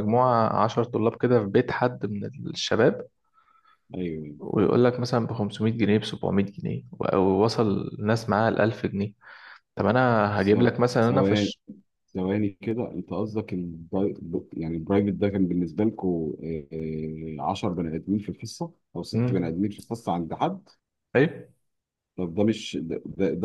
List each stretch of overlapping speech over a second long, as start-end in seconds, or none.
none